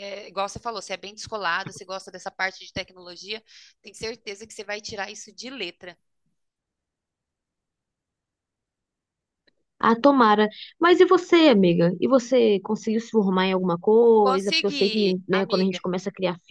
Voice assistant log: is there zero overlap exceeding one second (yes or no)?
no